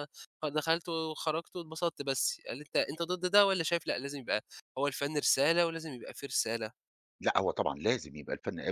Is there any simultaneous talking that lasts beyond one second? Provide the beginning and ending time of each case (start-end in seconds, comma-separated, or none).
none